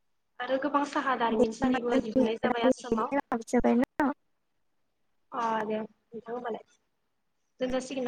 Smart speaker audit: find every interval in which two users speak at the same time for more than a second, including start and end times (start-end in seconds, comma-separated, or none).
1.4-3.1